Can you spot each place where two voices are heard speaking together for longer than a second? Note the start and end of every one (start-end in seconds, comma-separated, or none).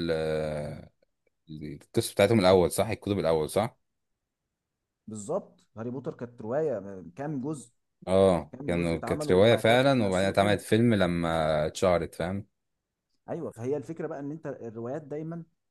8.5-10.6